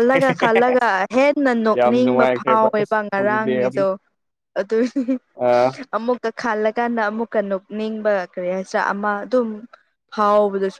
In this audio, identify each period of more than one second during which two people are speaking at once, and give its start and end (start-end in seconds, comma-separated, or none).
1.8-3.9